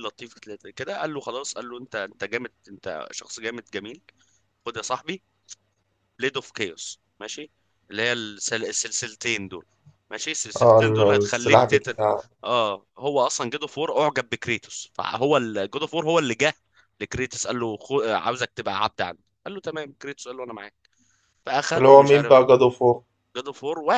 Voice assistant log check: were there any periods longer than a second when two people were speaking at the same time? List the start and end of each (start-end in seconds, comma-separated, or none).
10.6-11.9